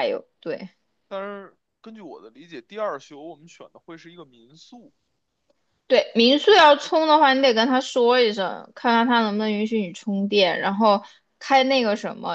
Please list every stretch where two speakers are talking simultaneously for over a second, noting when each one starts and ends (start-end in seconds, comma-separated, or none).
none